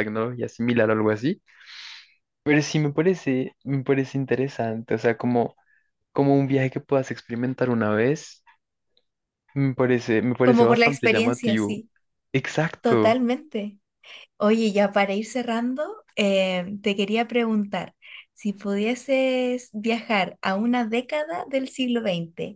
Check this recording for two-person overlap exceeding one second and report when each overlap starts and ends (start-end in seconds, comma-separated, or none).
10.4-11.8